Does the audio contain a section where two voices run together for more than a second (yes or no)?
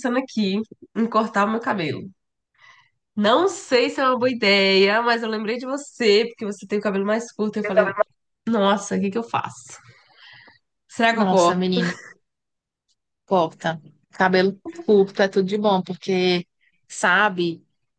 no